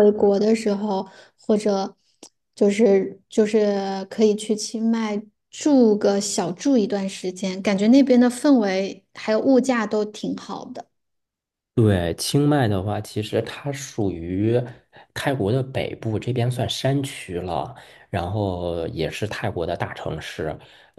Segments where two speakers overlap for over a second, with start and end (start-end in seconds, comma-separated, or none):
none